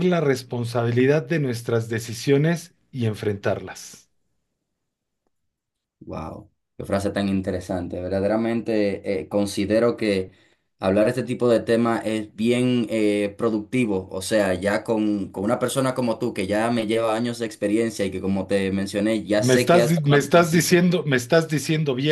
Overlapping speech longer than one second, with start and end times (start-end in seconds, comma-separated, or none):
19.4-20.8